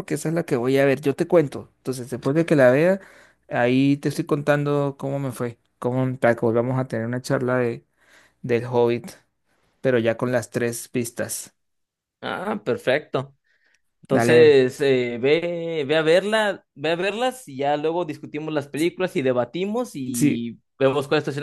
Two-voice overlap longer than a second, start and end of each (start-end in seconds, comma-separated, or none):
none